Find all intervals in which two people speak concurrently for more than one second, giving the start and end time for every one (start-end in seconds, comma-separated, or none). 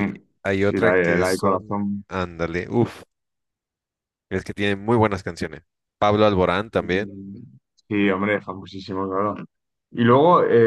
0.6-2.0